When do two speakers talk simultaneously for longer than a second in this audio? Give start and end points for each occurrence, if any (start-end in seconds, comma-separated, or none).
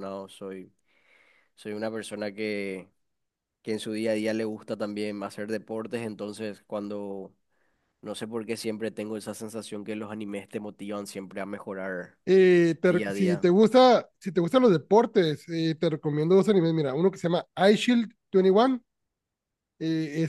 none